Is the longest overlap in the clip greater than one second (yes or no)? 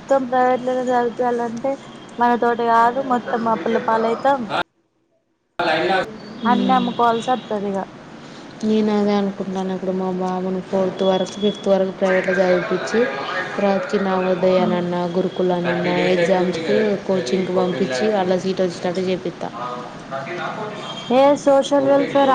no